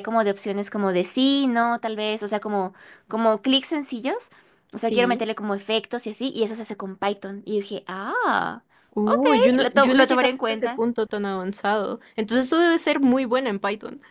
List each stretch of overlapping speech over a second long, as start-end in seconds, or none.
9.1-10.8